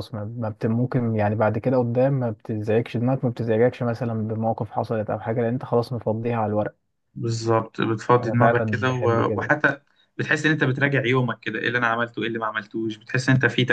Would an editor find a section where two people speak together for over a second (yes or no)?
yes